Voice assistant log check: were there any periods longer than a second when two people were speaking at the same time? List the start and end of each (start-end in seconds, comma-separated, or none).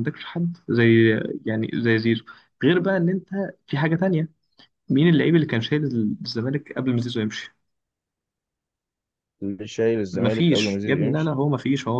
10.1-11.4